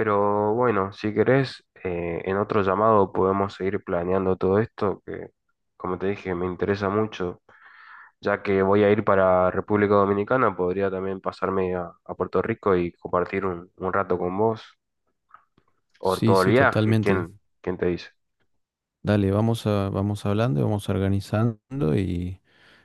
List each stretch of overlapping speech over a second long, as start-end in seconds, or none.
16.0-17.3